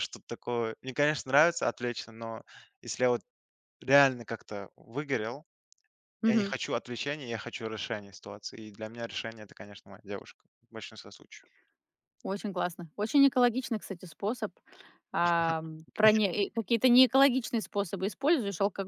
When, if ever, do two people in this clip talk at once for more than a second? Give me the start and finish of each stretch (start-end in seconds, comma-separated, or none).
none